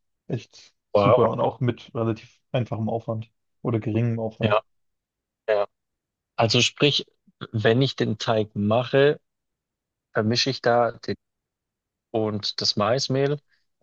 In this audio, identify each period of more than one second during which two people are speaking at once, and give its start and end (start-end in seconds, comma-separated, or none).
none